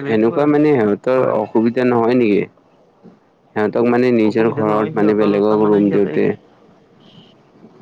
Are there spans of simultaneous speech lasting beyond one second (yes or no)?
yes